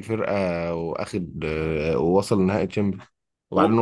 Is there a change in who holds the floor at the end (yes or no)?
no